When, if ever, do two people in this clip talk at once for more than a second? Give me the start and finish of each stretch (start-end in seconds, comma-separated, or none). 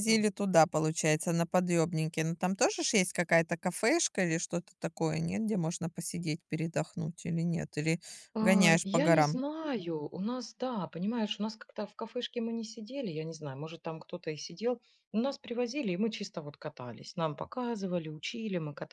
none